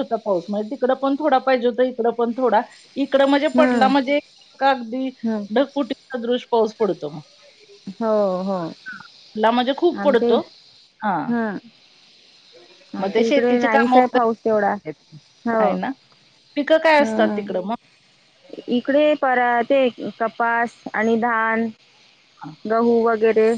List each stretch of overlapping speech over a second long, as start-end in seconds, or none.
13.0-14.7